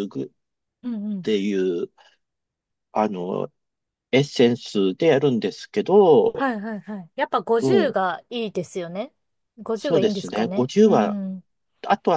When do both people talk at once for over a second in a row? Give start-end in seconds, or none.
9.8-11.2